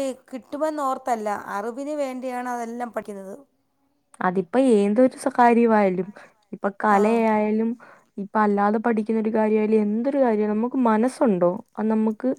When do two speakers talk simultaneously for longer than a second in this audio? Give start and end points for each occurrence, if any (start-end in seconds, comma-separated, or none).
none